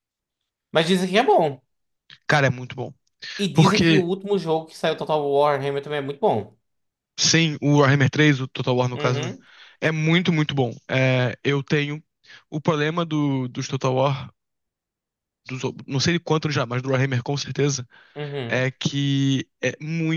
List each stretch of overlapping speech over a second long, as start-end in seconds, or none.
none